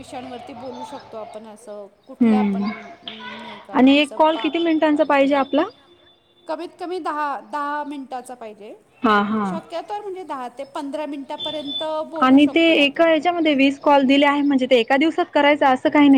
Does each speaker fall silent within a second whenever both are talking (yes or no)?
no